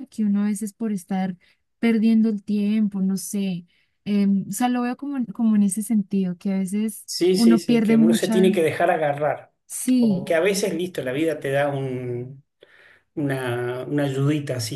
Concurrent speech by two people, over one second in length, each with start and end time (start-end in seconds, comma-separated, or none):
7.0-8.6